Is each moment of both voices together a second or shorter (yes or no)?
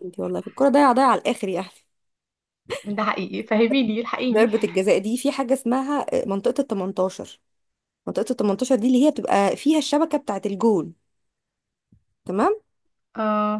yes